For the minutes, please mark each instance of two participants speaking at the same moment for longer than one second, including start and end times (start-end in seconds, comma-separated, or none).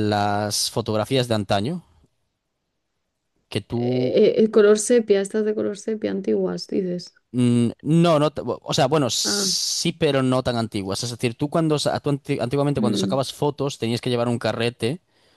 none